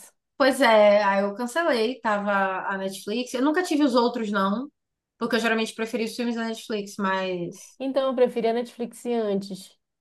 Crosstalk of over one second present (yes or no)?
no